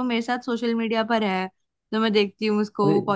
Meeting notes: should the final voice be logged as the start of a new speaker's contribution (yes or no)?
no